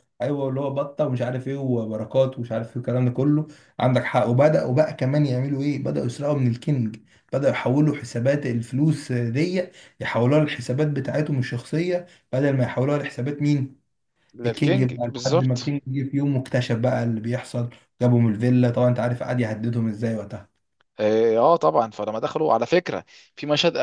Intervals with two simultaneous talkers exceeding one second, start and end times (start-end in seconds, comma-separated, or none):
14.4-15.7